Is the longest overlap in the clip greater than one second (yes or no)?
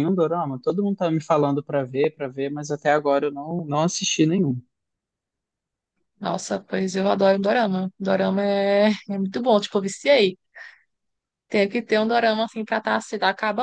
no